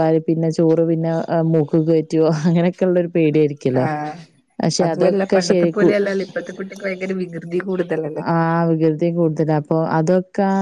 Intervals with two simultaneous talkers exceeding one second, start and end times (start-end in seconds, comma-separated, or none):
none